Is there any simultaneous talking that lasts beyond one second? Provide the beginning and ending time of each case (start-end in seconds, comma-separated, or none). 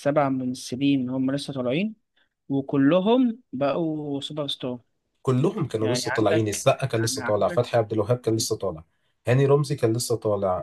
5.8-7.6